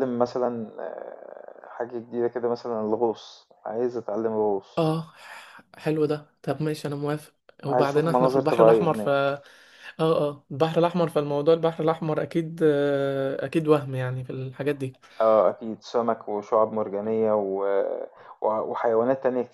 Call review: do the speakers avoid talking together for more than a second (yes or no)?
no